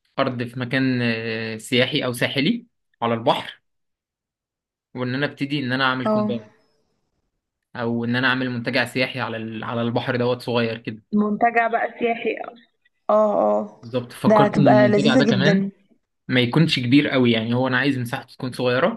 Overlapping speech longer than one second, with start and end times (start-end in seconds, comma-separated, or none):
14.3-15.6